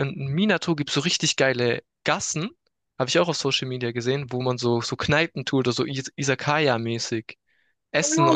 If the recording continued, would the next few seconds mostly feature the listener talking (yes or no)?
yes